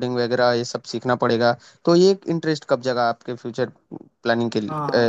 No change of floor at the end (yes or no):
no